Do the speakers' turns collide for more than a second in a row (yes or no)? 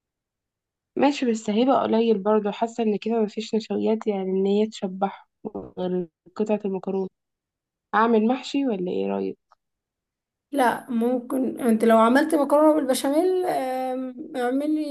no